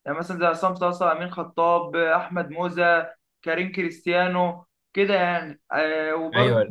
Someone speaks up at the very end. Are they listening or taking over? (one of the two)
listening